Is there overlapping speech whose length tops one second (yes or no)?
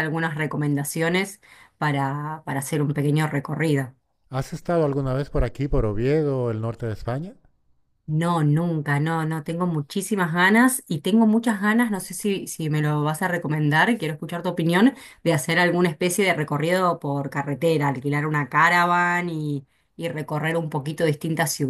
no